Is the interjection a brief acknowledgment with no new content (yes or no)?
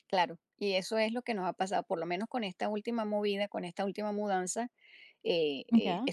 yes